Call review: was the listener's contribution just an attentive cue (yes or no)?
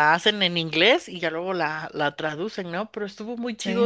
yes